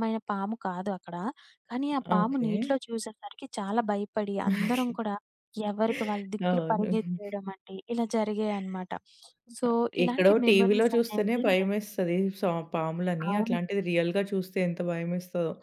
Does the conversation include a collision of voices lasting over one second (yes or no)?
yes